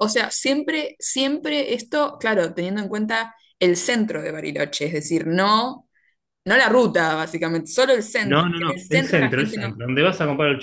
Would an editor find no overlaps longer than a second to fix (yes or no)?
no